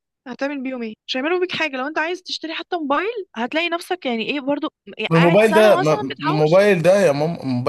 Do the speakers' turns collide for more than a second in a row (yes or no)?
yes